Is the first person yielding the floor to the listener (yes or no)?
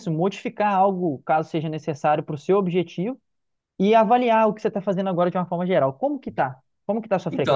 yes